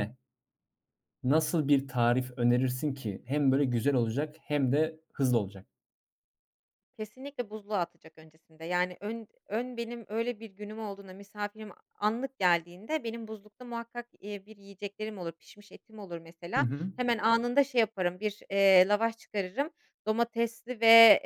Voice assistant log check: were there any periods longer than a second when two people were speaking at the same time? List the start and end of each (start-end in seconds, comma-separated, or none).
none